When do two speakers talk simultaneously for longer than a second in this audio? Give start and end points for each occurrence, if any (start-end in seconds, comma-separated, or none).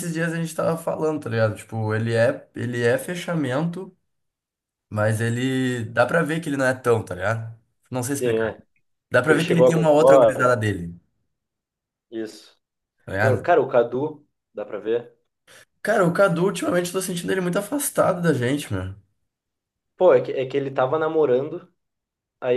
9.2-10.6